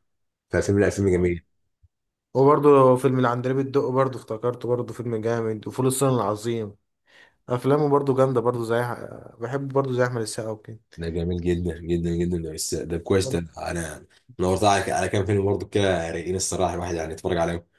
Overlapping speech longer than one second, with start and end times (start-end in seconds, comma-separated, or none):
none